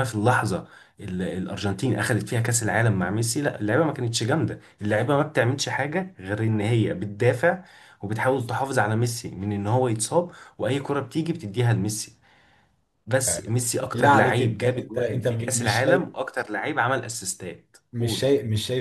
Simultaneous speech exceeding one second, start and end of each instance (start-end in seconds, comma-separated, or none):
13.3-16.1